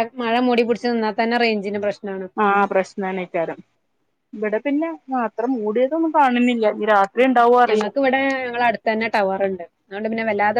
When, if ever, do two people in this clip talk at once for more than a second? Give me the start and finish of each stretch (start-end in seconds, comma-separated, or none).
none